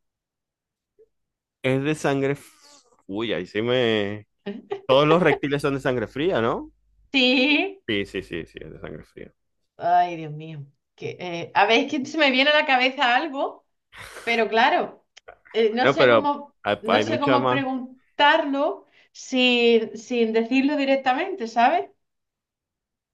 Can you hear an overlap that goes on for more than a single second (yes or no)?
yes